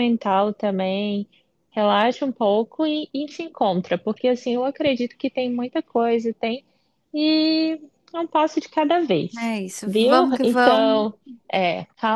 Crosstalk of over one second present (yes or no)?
yes